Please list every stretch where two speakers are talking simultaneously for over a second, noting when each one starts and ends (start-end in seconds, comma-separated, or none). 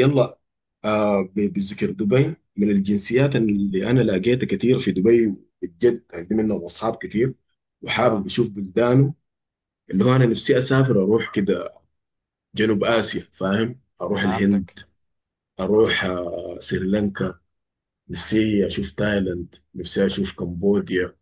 none